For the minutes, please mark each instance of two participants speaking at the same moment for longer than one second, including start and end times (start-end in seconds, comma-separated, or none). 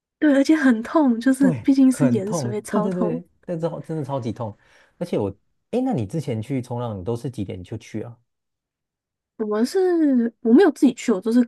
1.4-3.2